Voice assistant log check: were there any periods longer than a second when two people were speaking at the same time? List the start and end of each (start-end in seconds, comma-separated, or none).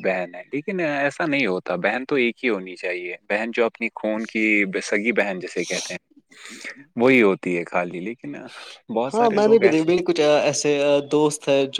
none